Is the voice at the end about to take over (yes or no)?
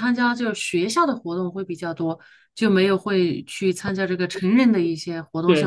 yes